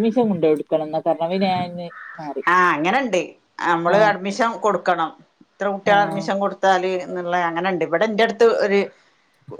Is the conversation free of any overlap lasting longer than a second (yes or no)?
yes